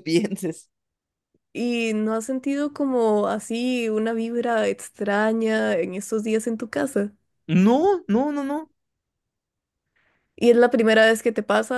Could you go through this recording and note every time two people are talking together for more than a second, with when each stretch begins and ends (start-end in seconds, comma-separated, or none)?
none